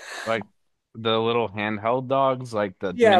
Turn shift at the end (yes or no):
yes